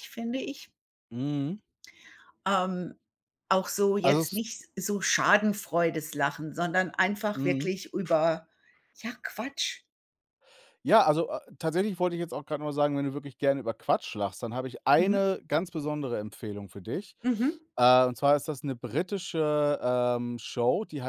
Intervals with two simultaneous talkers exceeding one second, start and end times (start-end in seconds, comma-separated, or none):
none